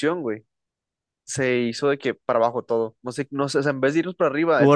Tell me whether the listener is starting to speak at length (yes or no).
no